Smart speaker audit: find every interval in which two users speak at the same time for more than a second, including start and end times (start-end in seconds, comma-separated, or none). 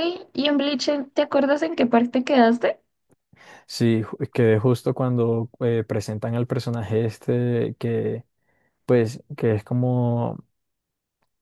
none